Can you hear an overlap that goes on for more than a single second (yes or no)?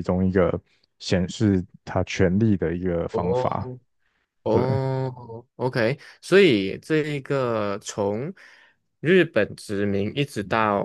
no